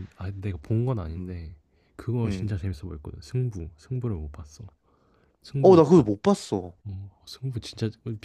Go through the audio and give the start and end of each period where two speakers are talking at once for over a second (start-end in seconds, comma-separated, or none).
none